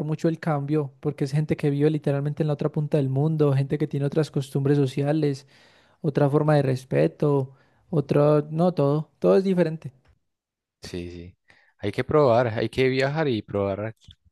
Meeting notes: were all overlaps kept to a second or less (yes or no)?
yes